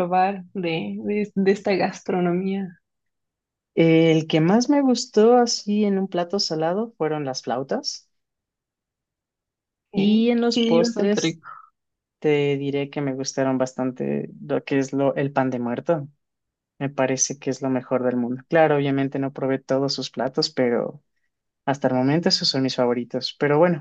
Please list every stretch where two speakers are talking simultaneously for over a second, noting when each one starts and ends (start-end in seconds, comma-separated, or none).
9.9-11.4